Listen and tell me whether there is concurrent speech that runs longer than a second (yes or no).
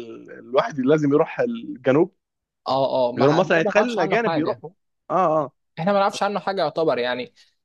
yes